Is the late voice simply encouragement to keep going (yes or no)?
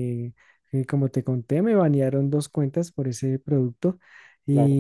yes